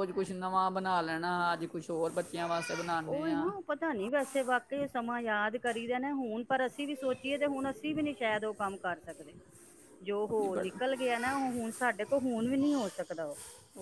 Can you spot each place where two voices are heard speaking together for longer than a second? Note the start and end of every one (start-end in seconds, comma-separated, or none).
none